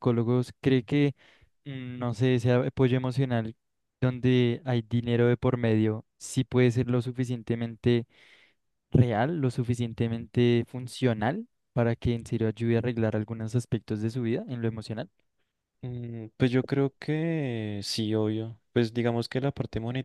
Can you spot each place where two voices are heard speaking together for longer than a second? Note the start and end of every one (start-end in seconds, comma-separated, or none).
none